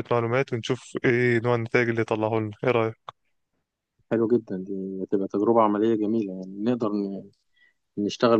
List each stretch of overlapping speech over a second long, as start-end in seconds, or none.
none